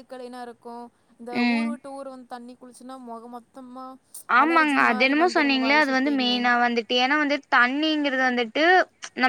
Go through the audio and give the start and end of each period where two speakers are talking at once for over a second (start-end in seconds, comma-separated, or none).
4.4-6.4